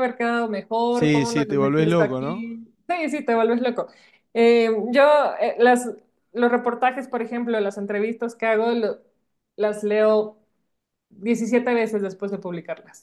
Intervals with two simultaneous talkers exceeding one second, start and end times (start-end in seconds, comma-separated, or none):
0.9-2.5